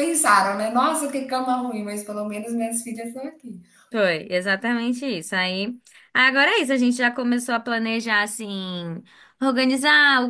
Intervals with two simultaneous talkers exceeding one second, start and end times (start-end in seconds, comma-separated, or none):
none